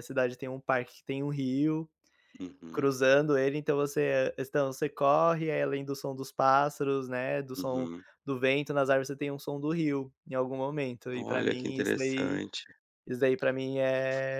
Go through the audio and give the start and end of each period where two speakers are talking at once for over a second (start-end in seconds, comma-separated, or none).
11.1-12.4